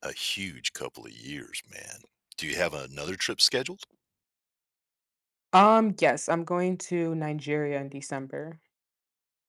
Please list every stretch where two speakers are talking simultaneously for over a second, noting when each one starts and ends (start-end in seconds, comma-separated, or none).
none